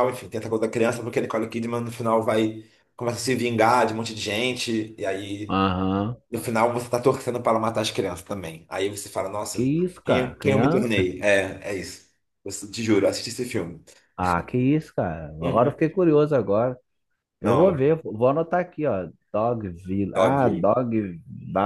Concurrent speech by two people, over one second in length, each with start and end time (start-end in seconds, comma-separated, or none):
9.5-11.1